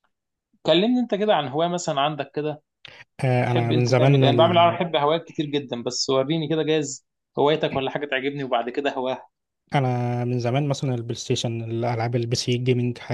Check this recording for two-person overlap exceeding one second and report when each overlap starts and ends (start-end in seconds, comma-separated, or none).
3.4-4.8